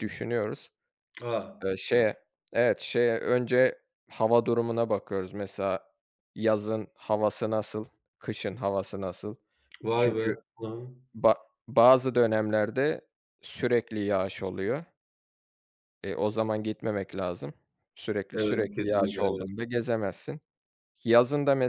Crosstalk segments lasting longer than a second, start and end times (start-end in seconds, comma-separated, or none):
18.3-19.5